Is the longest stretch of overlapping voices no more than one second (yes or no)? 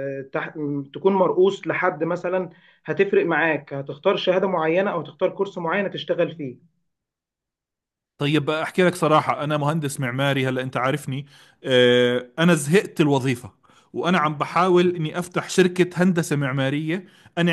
yes